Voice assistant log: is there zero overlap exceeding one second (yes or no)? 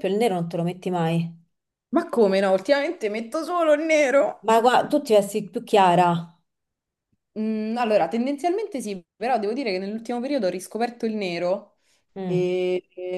yes